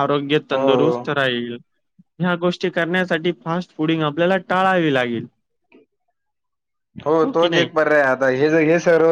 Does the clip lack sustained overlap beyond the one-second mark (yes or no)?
yes